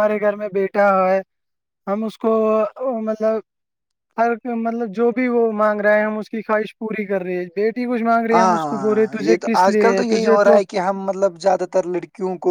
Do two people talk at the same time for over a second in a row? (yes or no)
yes